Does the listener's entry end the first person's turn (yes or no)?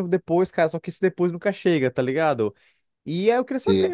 no